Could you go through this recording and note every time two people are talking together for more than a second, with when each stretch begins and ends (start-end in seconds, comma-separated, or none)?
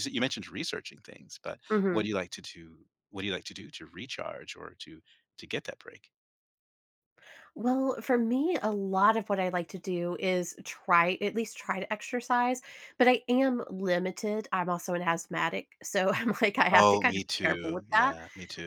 16.7-18.1